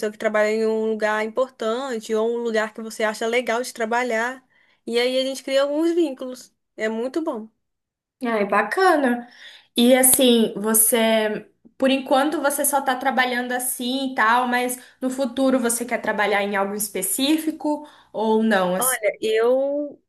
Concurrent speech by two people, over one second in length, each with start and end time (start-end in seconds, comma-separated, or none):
none